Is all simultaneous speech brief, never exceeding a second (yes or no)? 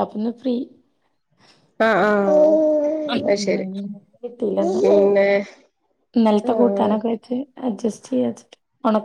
yes